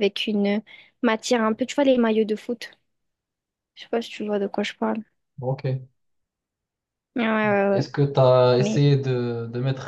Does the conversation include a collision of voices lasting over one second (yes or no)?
no